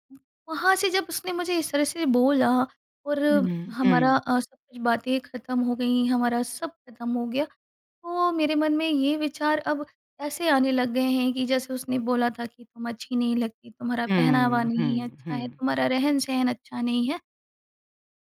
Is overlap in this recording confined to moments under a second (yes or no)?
no